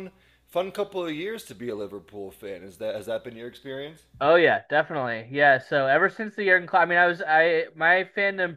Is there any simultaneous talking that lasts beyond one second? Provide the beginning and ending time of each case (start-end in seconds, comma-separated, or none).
none